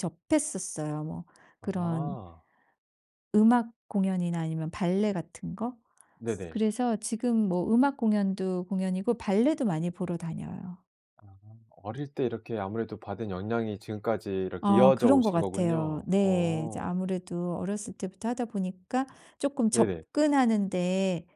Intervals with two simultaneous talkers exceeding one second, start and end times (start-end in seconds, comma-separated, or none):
14.6-16.9